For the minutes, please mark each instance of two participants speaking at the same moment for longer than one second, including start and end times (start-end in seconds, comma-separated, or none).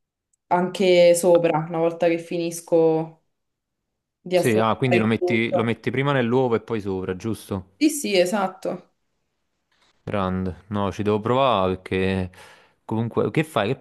4.3-5.8